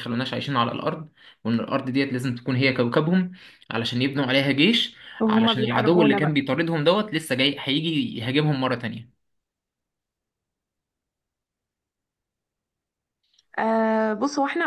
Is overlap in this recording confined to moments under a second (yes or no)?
no